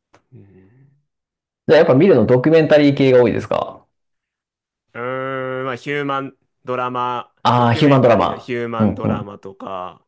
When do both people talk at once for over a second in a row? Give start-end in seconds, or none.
7.4-9.3